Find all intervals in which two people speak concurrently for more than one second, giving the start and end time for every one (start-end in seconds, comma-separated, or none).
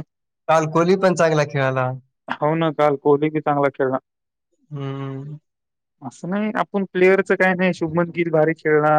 none